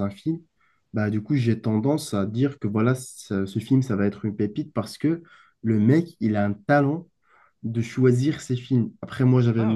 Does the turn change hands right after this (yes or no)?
no